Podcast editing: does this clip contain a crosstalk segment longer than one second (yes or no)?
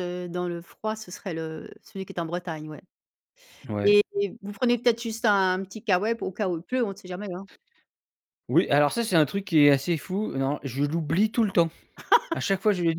no